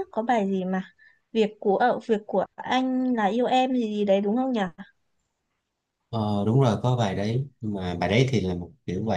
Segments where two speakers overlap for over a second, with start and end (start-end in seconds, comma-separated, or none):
none